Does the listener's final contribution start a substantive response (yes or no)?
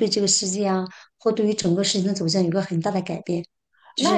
yes